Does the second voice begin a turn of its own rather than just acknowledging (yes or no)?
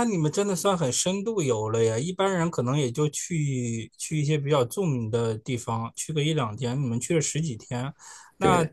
no